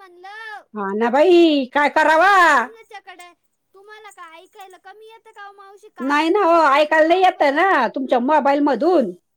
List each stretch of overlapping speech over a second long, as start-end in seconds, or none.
6.1-7.7